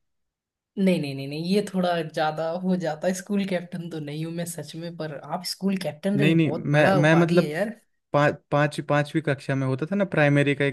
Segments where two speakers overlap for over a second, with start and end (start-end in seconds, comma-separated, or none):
6.1-7.5